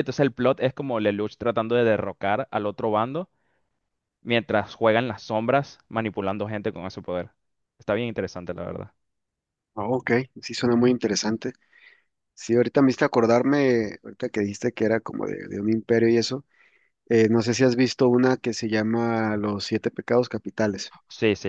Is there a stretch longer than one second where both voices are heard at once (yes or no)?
no